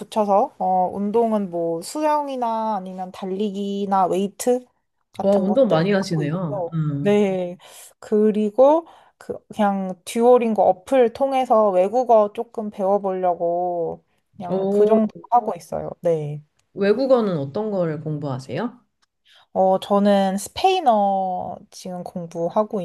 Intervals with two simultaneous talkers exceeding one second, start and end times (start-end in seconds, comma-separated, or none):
5.2-7.2